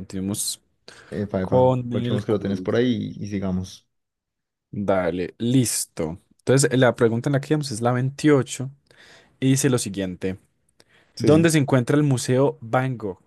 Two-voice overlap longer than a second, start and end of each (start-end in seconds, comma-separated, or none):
1.4-2.8